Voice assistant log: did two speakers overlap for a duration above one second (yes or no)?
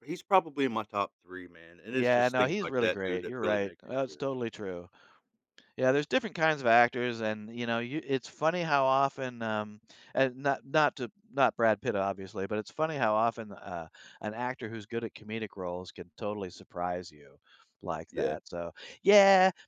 yes